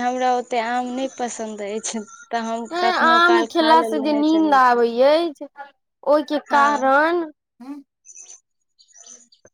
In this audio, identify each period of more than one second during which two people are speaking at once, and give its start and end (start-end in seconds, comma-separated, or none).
2.7-4.9